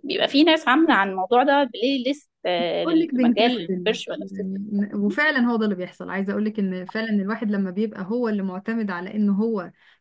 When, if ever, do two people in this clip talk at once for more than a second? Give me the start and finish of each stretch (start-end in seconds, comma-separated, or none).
2.6-4.2